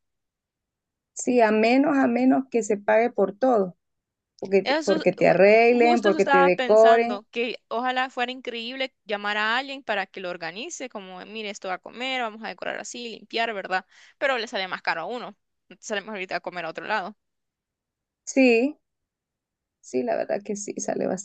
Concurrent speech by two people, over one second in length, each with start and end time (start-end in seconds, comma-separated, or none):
4.6-7.2